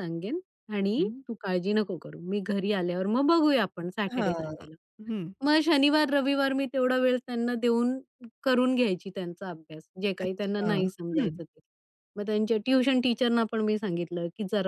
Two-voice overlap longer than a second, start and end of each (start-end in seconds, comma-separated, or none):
10.2-11.4